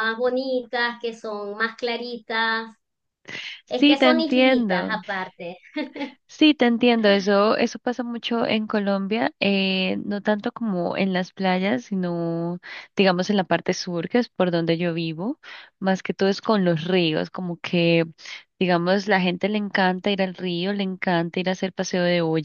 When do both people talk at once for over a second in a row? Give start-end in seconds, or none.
3.7-5.0